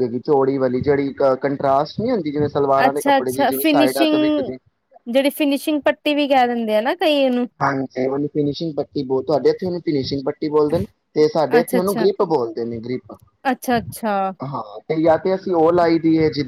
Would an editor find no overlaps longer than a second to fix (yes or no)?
yes